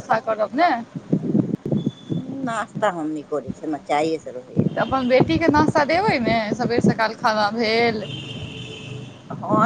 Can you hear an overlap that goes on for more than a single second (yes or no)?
no